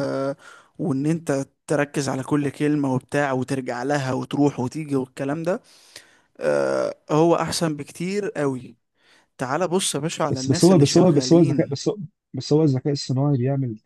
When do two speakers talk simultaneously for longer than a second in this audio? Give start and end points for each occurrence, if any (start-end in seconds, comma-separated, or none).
10.3-11.7